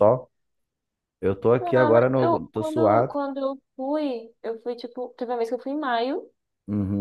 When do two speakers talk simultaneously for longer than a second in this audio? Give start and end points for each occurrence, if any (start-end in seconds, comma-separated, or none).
1.6-3.2